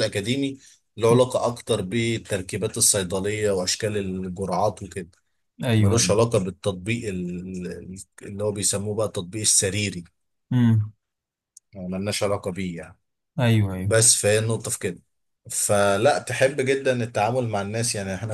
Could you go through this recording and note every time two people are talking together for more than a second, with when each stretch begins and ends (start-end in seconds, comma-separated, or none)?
none